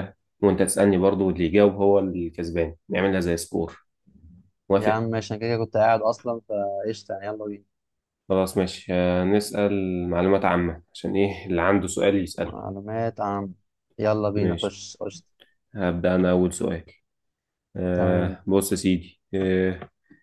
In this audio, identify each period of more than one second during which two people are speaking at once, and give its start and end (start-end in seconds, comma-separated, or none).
none